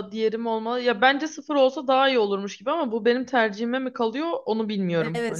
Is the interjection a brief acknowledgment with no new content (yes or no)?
no